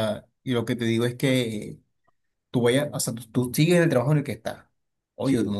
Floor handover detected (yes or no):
no